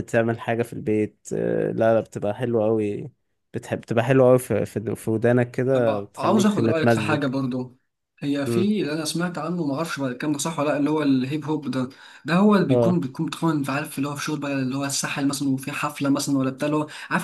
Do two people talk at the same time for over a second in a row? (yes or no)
yes